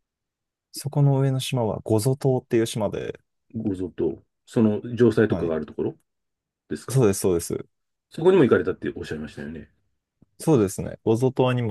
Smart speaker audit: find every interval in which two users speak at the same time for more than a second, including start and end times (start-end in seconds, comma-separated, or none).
none